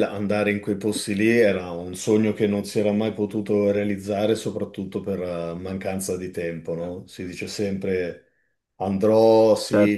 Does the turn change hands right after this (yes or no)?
no